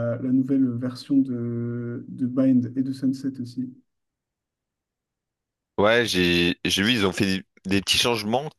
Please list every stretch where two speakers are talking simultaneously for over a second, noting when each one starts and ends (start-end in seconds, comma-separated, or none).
none